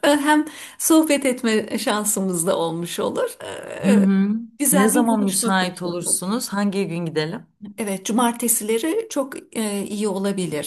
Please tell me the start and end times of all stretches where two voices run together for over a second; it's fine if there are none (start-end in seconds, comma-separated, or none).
4.7-6.3